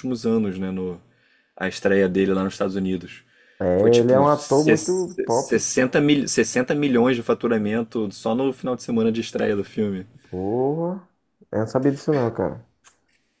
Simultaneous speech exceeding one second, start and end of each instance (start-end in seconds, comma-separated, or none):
3.8-5.6